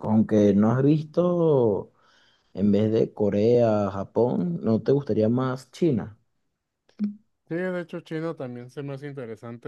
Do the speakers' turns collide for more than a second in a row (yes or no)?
no